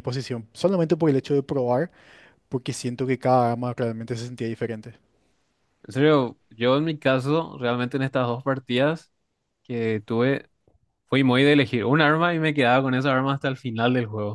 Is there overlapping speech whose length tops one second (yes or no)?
no